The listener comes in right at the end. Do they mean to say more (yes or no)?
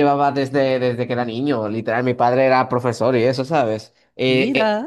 no